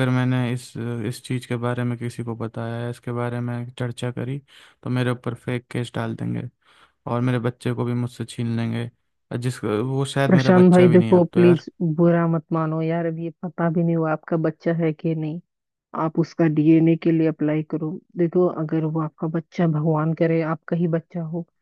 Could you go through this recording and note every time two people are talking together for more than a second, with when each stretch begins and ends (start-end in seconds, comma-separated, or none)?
10.3-11.6